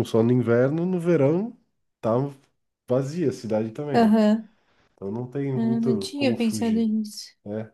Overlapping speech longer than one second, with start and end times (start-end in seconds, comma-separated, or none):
5.5-6.9